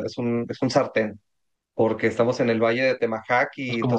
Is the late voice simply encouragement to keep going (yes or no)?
yes